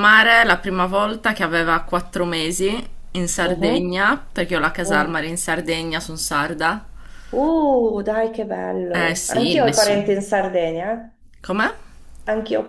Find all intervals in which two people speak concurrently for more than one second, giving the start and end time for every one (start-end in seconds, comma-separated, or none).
8.9-10.1